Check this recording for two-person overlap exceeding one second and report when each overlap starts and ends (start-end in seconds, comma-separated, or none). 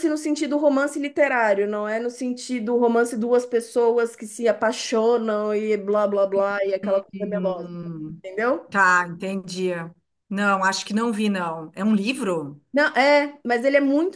none